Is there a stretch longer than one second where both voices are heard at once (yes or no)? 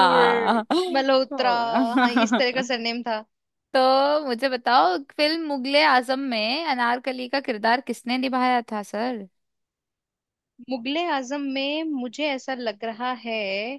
no